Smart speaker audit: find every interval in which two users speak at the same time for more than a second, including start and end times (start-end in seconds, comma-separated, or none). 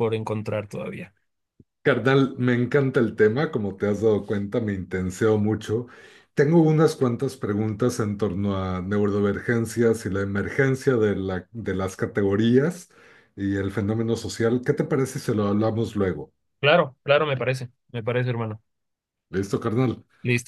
none